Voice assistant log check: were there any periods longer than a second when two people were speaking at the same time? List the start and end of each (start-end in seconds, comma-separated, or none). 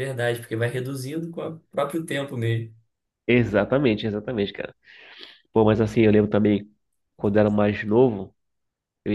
none